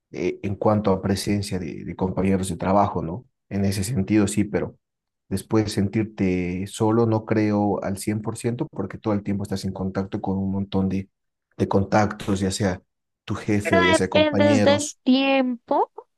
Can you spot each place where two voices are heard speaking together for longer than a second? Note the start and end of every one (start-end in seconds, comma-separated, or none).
13.6-15.0